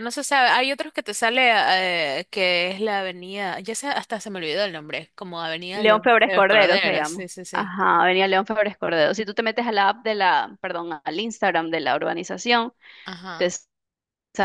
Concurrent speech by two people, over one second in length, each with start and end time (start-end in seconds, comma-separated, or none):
5.7-7.8